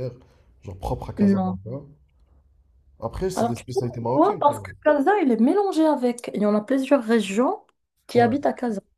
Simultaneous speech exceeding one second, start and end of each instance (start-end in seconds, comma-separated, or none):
3.4-4.5